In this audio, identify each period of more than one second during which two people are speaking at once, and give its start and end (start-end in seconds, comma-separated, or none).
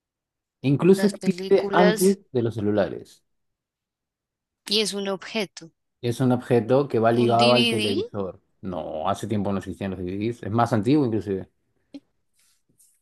0.9-2.2